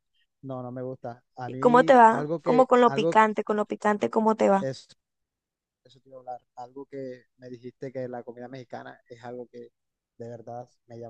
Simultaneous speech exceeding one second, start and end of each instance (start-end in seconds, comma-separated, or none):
1.5-3.2